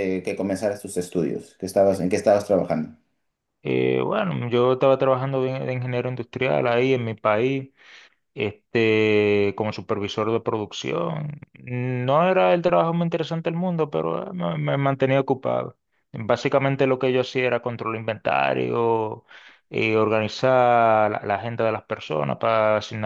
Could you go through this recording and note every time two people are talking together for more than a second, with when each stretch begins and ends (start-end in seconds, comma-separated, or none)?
none